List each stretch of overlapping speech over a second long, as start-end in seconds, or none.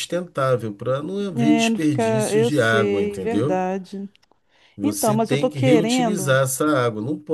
1.4-3.6, 4.8-6.4